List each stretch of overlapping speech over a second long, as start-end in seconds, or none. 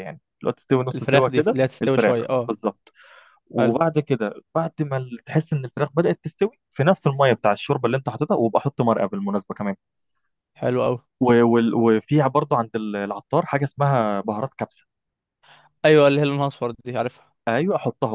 0.9-2.5